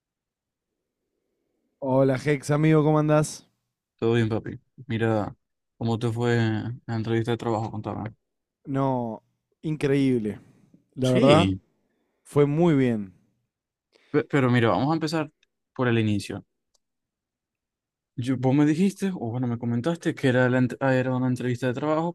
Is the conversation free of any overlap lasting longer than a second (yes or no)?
yes